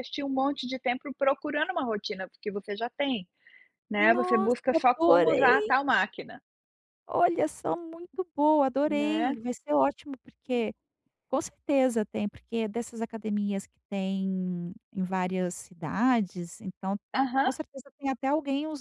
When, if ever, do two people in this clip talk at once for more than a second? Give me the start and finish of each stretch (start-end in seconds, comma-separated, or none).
4.0-5.7